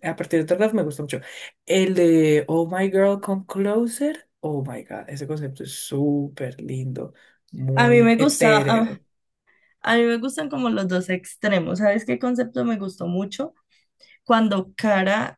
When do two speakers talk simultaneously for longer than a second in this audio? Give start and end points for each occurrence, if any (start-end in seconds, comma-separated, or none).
7.8-9.0